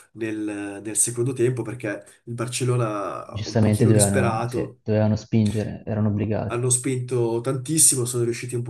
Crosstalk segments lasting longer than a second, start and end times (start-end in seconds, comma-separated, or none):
3.3-4.8